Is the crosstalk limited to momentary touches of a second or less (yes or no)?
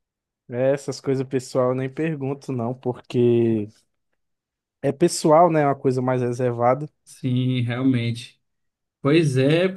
yes